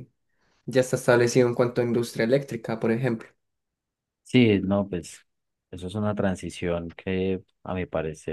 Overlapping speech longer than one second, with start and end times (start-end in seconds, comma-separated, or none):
none